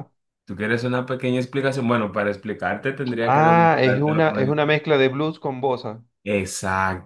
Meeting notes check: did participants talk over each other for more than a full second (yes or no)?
yes